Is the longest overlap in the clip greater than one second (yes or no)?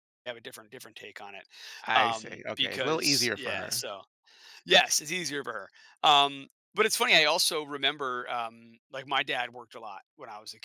yes